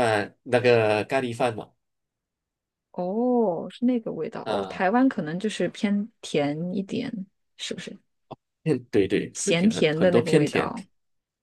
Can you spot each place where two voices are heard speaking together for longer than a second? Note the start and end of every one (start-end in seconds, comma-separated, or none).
9.3-10.7